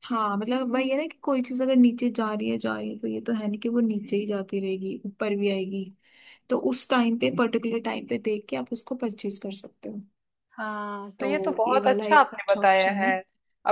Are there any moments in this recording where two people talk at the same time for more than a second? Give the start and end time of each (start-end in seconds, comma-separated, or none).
11.2-13.1